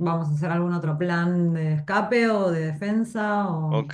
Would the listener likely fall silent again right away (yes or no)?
no